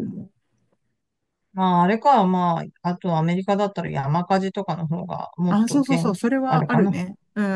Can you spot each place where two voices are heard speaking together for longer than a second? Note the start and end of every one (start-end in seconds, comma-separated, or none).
5.5-7.0